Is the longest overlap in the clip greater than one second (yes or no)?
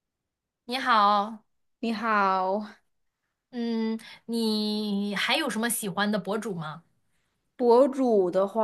no